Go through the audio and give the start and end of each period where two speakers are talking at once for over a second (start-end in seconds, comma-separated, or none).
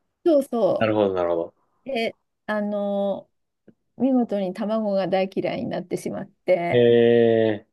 none